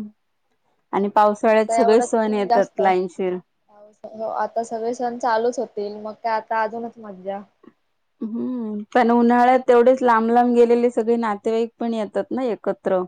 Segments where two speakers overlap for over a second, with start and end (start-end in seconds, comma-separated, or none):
1.5-3.3